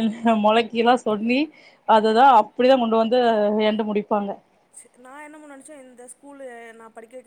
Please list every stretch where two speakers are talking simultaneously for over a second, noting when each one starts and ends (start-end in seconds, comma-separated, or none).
none